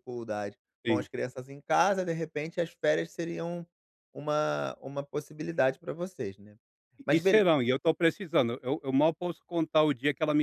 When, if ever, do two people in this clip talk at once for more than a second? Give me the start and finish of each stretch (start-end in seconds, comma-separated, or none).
none